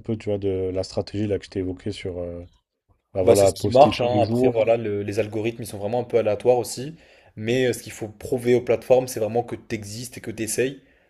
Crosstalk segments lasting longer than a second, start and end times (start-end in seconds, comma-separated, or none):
3.2-4.5